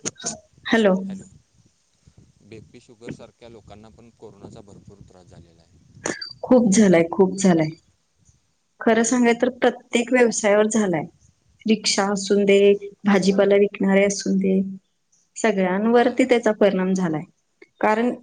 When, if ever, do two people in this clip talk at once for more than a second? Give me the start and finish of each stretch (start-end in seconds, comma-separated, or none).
none